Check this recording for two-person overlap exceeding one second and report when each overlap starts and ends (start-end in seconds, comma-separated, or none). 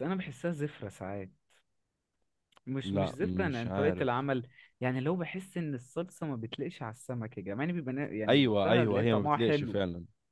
2.8-4.3, 8.3-9.8